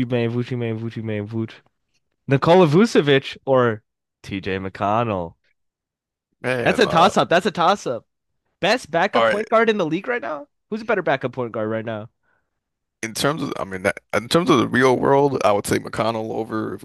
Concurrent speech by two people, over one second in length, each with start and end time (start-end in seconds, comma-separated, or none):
none